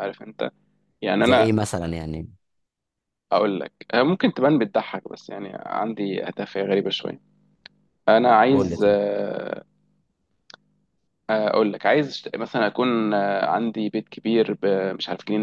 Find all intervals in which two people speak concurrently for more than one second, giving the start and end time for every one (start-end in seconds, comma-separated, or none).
none